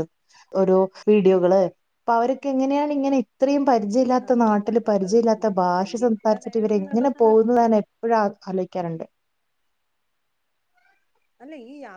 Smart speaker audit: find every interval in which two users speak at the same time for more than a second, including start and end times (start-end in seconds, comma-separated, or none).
4.3-7.3